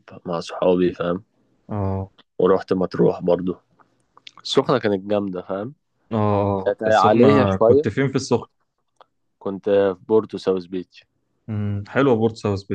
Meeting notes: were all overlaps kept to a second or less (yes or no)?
no